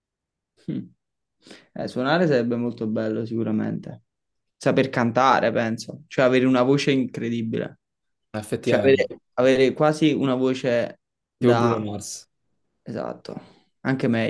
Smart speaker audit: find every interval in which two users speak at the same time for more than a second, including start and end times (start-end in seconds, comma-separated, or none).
none